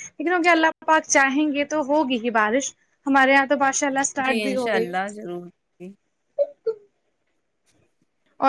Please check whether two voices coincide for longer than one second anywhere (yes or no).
no